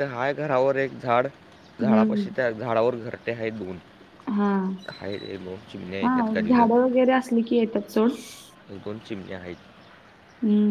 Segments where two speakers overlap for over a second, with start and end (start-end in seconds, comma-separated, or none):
none